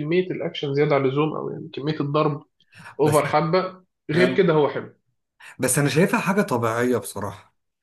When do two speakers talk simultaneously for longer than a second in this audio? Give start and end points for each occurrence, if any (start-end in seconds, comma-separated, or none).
none